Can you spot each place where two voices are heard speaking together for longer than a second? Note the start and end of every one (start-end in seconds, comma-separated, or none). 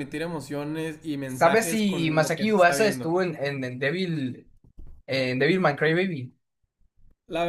1.3-3.1